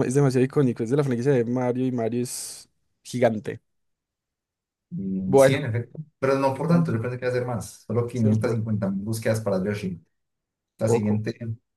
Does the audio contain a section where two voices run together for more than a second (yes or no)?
no